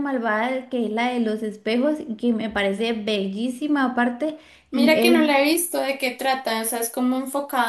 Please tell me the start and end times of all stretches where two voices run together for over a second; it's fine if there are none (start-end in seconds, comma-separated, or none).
none